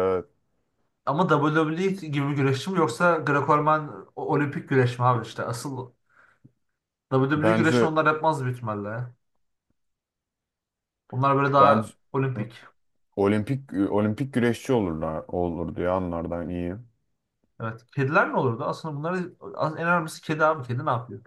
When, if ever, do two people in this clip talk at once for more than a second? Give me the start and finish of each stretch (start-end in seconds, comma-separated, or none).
none